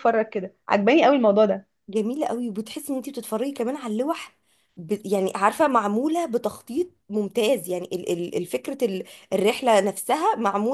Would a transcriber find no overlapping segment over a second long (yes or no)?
yes